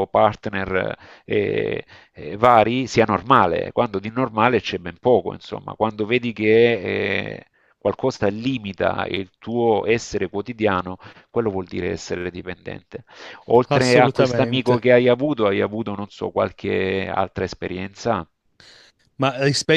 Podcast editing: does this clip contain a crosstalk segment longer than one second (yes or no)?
yes